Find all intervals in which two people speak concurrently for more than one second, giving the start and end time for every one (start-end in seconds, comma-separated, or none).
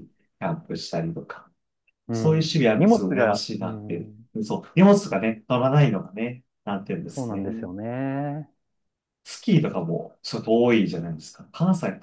2.1-4.3